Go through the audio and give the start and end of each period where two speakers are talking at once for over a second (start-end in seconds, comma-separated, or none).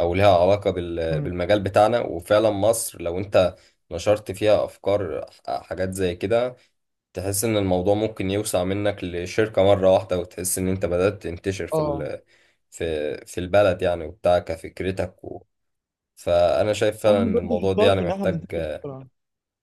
17.1-18.5